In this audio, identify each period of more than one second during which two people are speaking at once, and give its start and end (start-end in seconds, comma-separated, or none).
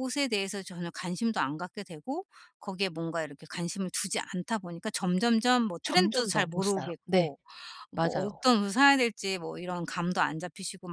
5.8-7.3